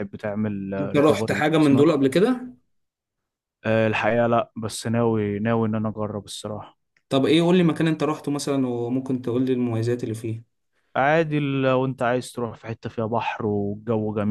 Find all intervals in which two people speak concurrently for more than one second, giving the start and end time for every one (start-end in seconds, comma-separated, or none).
0.8-2.1